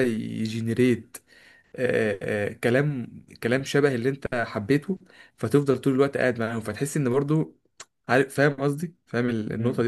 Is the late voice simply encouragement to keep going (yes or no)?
no